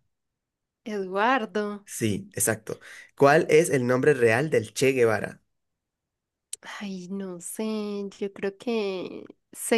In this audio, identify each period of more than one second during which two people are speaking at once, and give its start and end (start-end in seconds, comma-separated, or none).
none